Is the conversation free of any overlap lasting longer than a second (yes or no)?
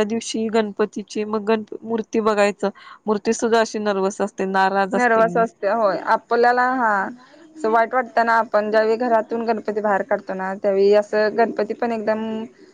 yes